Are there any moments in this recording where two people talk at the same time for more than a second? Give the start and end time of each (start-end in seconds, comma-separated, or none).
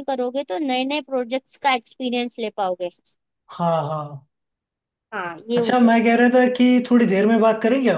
none